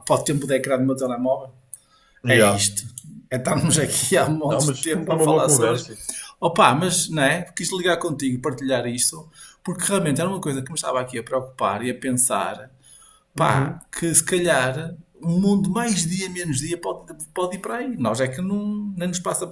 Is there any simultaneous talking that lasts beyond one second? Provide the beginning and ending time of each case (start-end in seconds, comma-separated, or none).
4.5-5.9